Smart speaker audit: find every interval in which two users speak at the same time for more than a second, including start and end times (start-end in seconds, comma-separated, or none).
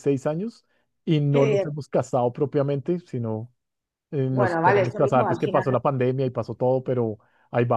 4.3-5.7